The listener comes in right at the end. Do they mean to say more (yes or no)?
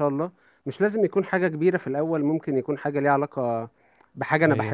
no